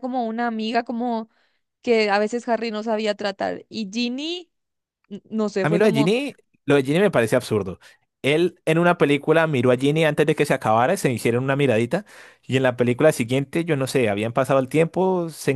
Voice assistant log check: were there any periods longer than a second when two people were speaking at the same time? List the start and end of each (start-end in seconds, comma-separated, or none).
none